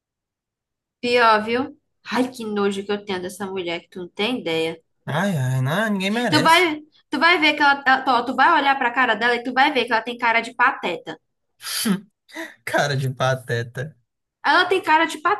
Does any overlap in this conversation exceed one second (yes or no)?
no